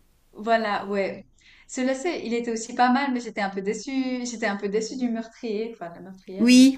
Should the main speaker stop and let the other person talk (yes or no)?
yes